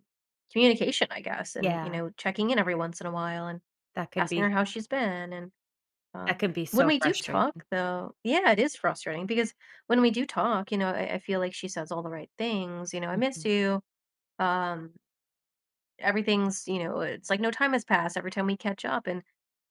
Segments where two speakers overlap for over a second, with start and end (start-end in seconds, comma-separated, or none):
6.3-7.6